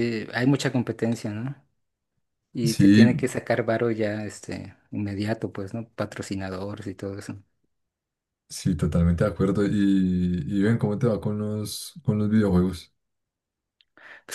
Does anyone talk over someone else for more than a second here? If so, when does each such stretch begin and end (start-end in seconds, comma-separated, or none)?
none